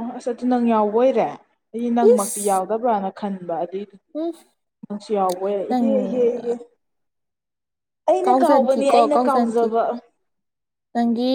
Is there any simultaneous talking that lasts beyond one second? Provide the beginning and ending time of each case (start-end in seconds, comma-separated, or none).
8.3-9.7